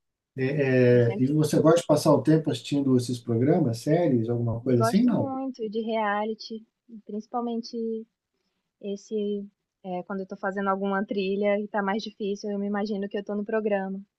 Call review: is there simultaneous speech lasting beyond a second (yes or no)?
no